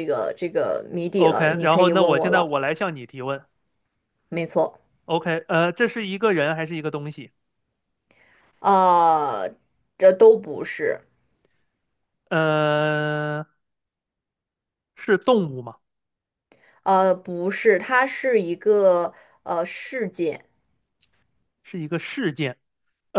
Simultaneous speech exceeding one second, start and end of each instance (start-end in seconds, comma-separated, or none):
1.2-2.5